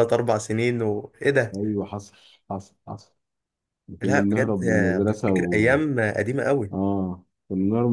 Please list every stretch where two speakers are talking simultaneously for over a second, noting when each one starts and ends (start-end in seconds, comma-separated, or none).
4.0-5.8